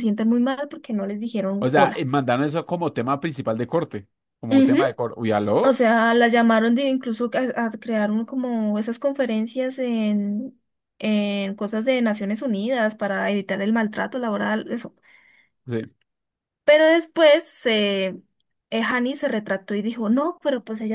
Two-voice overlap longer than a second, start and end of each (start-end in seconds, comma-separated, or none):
none